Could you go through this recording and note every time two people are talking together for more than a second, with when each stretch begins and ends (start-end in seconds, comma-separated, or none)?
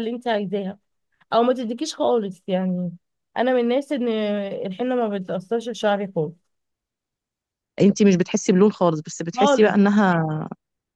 none